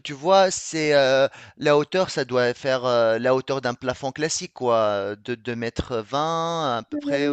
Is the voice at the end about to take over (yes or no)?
yes